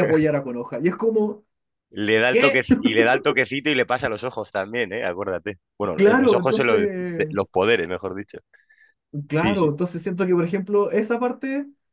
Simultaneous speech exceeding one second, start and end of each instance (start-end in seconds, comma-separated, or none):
6.0-7.4